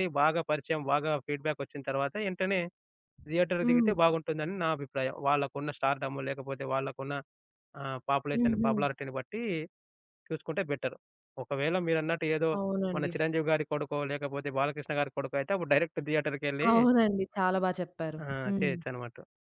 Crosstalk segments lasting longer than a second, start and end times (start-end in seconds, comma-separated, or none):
none